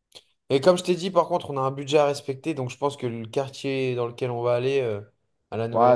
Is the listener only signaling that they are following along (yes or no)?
no